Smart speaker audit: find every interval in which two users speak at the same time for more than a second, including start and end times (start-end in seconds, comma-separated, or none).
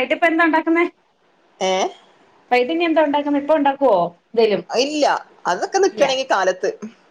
none